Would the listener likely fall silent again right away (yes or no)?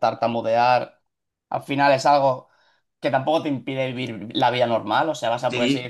yes